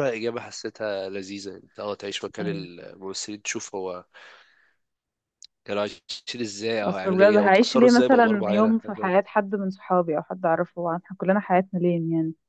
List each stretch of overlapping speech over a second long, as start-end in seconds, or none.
6.8-8.7